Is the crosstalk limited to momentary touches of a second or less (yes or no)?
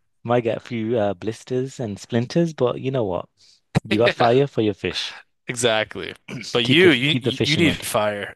no